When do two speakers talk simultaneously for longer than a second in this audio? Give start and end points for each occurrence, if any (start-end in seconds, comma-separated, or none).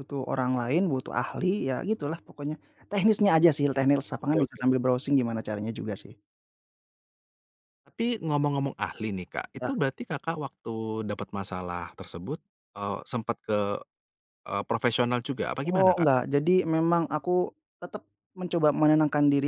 none